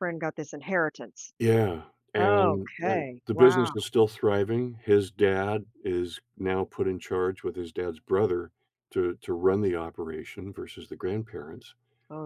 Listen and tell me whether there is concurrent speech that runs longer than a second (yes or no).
yes